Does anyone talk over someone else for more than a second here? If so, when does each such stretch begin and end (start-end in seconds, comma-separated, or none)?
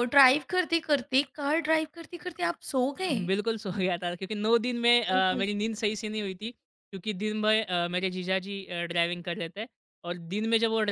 none